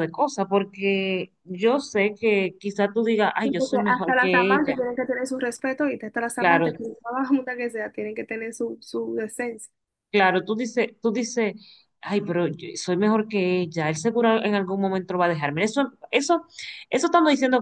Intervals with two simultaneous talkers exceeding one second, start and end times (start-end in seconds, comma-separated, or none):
3.4-4.8